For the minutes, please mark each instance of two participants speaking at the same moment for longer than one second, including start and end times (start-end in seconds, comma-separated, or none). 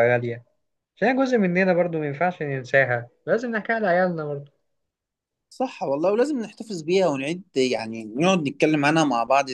none